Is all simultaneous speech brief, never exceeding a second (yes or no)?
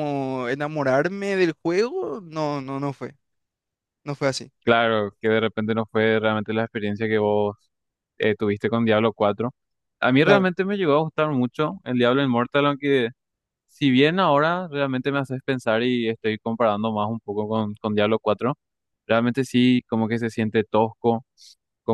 yes